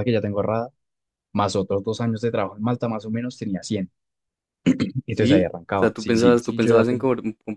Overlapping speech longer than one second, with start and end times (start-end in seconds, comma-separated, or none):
5.1-7.1